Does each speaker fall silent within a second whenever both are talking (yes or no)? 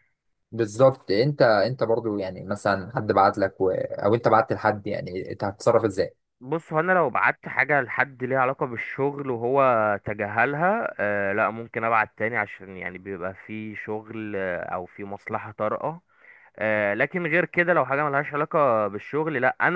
yes